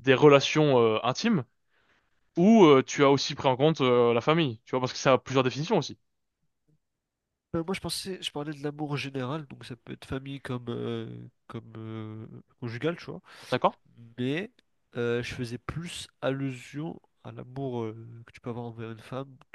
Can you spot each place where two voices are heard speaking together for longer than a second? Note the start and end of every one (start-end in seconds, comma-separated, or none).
none